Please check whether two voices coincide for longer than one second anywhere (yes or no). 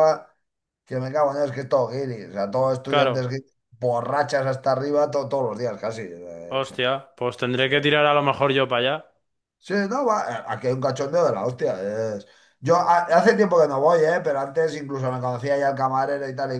no